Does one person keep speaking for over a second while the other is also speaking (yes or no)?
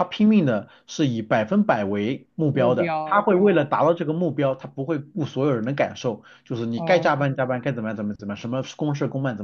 yes